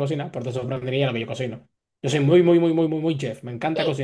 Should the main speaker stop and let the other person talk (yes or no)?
yes